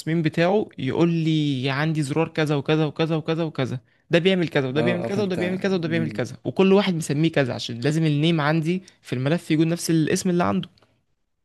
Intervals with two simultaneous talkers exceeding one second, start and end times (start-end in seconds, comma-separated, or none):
4.8-6.3